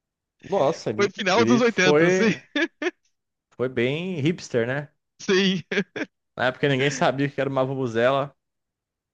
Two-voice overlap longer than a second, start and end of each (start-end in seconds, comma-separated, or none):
0.9-2.3